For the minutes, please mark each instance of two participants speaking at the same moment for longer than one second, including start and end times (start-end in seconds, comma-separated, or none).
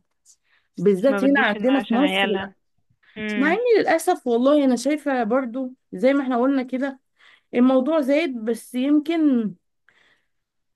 1.1-2.5